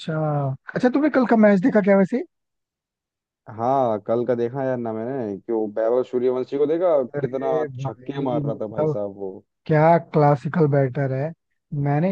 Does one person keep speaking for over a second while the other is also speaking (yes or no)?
yes